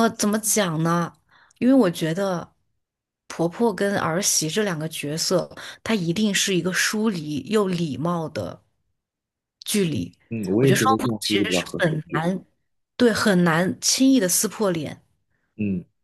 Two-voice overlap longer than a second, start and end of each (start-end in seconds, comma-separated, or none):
10.6-12.3